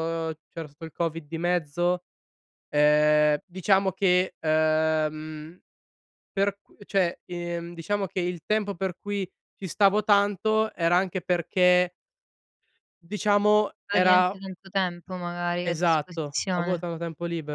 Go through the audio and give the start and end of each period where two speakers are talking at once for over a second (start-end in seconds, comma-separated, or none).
15.7-16.9